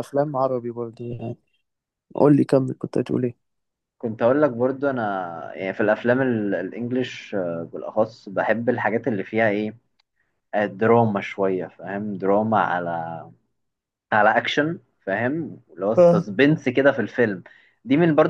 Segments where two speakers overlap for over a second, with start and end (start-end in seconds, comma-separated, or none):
none